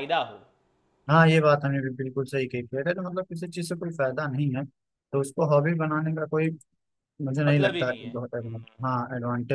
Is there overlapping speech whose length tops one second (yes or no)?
yes